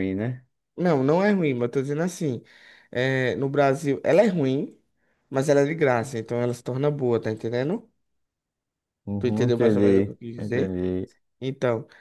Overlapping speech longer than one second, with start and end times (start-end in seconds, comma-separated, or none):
9.2-10.7